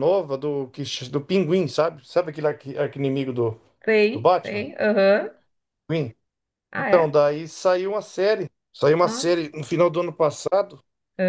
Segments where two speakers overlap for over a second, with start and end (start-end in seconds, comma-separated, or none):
none